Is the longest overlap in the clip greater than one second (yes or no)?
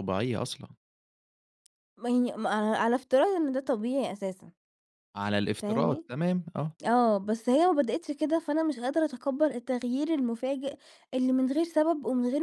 no